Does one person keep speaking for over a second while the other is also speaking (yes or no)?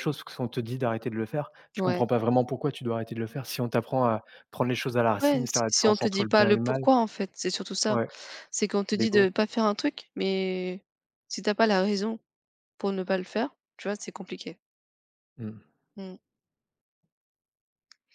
yes